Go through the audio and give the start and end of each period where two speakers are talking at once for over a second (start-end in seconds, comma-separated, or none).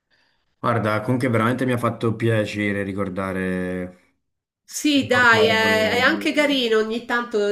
4.9-6.1